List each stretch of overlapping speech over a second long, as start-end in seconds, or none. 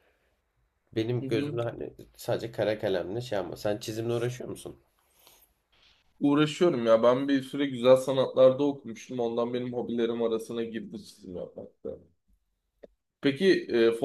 none